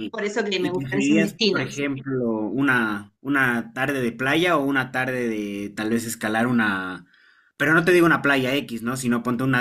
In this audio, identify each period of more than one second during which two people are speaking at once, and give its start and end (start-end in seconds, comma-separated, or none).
0.6-1.8